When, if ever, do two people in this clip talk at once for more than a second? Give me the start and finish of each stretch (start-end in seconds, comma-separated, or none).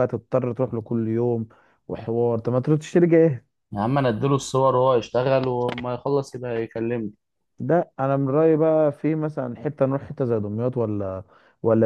none